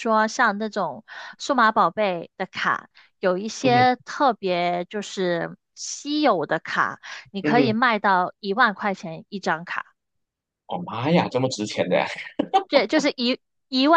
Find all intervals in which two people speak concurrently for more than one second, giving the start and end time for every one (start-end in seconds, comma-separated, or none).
none